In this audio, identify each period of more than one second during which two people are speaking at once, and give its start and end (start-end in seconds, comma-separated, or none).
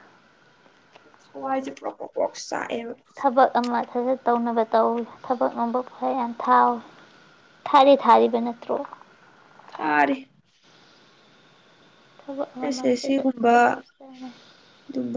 12.6-14.3